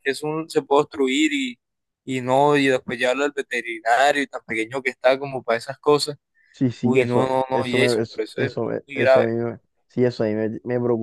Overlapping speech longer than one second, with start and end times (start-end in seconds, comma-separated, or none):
6.8-9.3